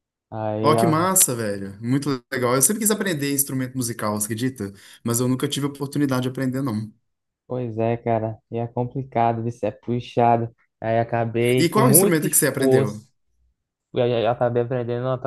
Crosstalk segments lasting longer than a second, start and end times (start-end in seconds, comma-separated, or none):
11.6-13.1